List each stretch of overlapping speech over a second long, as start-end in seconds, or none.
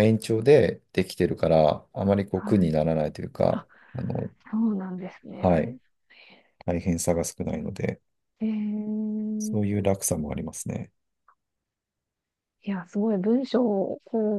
none